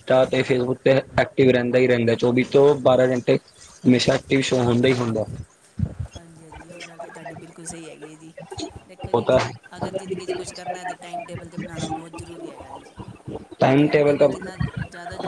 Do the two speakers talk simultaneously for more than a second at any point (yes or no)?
no